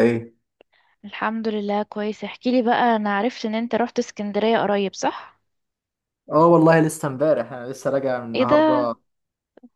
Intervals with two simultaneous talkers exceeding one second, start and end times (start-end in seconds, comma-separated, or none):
none